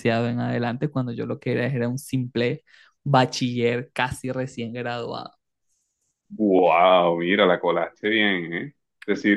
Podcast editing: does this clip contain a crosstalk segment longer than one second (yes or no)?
no